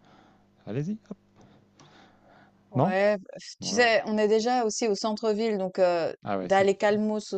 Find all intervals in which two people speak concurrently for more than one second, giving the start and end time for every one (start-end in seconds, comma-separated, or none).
none